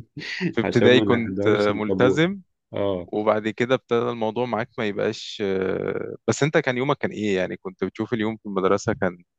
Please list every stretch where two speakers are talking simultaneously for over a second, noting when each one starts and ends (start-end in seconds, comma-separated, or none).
0.6-2.2